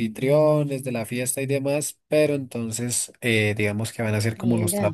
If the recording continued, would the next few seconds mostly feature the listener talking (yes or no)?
no